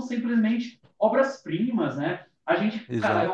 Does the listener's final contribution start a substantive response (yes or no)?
no